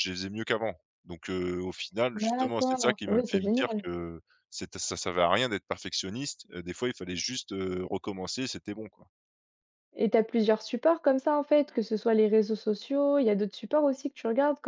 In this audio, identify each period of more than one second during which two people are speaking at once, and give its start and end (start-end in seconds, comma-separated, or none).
2.1-3.8